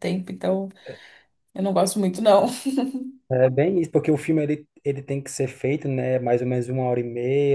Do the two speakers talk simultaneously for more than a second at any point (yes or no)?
no